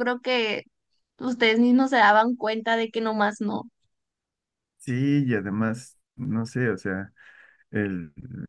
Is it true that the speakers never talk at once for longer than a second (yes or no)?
yes